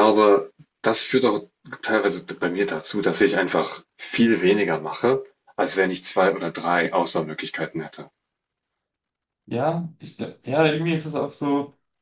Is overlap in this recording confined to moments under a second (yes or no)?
yes